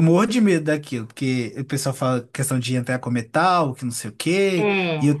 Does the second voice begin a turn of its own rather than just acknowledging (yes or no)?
no